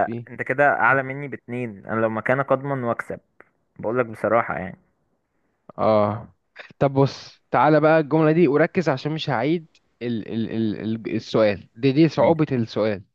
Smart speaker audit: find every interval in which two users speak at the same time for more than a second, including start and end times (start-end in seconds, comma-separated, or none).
none